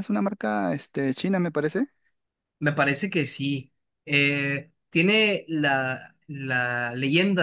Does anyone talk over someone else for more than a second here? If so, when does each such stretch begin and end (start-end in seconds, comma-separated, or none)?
none